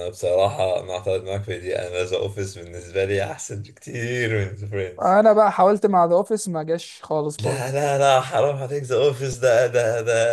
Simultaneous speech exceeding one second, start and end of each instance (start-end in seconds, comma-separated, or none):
none